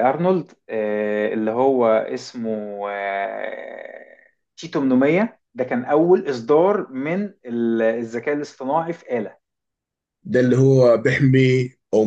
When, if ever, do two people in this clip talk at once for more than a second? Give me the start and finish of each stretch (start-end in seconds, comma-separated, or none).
none